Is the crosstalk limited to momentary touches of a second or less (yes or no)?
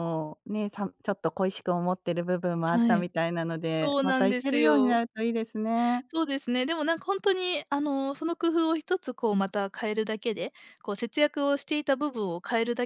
no